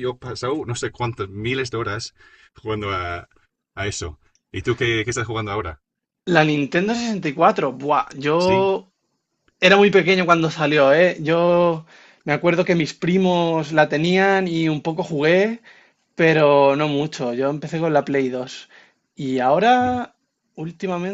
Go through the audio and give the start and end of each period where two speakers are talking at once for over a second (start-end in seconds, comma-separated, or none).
none